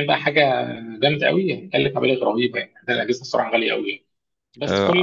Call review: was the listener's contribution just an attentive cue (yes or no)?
yes